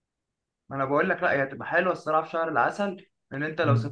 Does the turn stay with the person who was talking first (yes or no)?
no